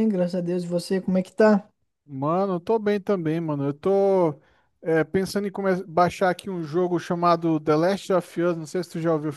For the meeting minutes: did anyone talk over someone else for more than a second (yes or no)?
no